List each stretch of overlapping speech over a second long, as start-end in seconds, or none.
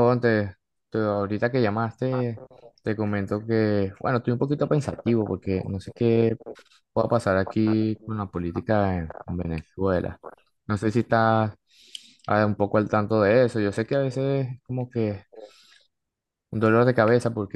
4.6-6.4, 7.4-9.2